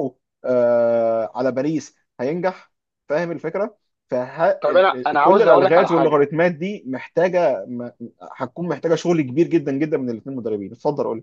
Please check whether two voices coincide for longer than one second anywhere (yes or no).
yes